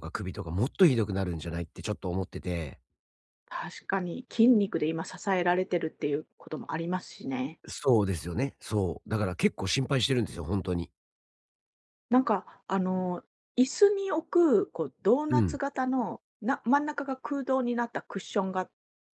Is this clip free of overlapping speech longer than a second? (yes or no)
yes